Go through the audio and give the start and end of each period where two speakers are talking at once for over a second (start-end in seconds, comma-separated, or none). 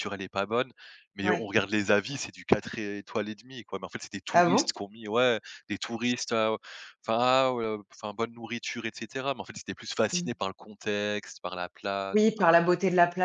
none